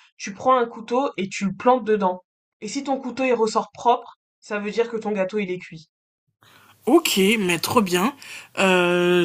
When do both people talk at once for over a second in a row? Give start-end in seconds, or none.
none